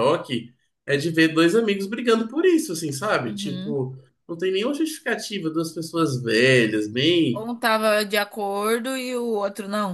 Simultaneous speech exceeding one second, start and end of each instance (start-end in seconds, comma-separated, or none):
none